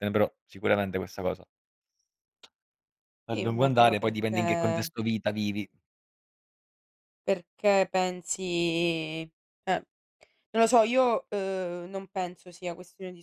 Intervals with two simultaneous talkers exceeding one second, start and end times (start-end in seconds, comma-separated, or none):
3.3-4.9